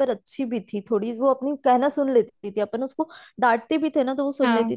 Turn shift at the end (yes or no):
no